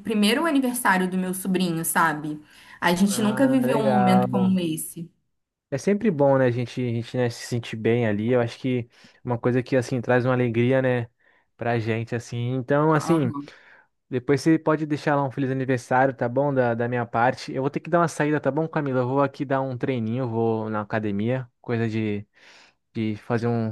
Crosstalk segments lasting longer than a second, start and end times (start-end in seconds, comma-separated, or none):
3.1-4.6